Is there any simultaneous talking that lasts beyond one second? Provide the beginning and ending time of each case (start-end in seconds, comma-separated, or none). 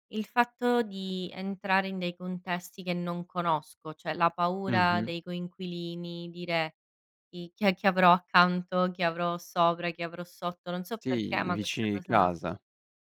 11.0-12.3